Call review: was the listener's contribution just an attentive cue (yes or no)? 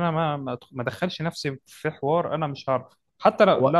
yes